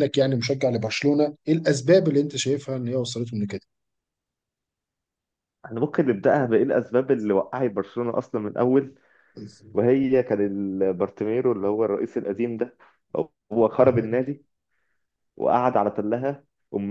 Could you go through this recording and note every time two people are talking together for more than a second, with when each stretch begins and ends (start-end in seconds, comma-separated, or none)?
none